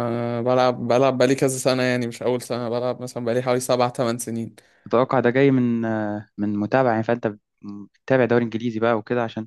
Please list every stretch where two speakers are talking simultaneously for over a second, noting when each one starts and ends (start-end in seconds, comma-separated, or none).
none